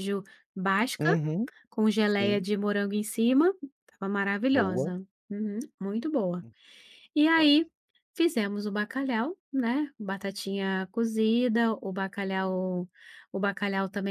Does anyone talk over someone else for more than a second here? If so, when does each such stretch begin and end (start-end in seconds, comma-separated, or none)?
none